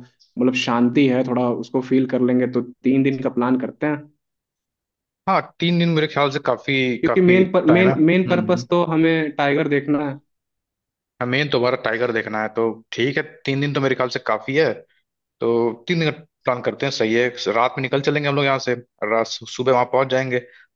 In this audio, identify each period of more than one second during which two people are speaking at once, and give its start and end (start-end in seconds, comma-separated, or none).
7.0-8.7